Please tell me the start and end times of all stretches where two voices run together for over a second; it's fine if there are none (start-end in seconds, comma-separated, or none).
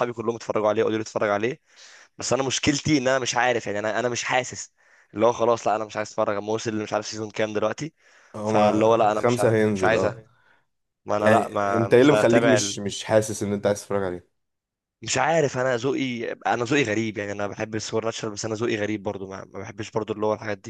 8.4-10.1, 11.2-12.6